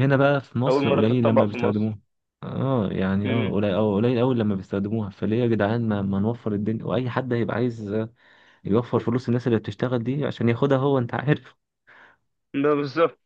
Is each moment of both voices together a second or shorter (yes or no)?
no